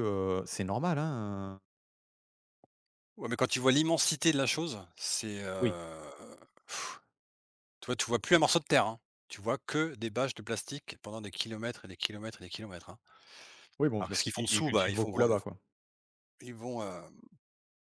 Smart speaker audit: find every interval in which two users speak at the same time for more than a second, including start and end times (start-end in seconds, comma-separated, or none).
14.0-15.3